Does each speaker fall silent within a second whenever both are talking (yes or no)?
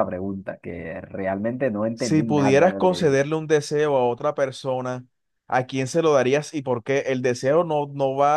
no